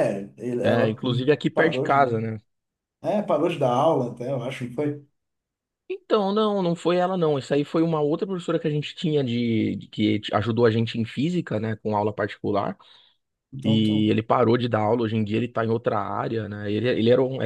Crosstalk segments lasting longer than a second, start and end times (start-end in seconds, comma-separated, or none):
0.6-2.2